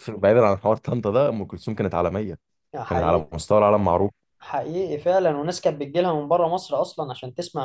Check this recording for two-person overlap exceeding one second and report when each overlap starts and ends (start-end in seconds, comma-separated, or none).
none